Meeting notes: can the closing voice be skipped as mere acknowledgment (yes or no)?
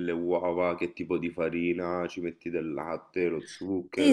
no